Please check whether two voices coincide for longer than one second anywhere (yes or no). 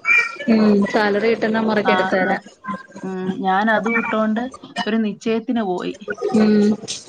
no